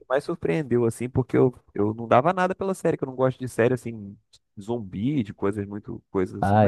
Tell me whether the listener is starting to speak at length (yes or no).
yes